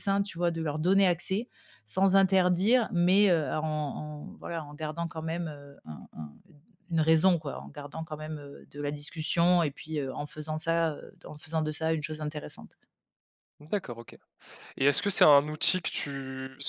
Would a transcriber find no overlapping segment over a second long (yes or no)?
yes